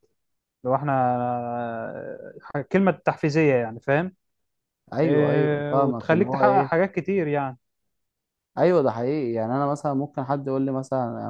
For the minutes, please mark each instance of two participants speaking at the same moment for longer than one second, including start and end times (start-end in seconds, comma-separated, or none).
5.0-6.7